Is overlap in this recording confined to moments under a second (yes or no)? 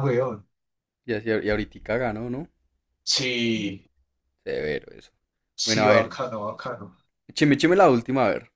yes